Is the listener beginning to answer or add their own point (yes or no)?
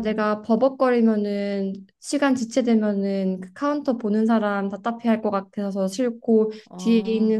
no